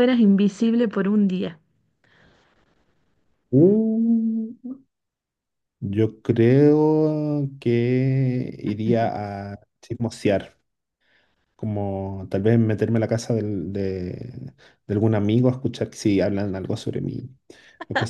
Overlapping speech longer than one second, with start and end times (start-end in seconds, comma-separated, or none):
none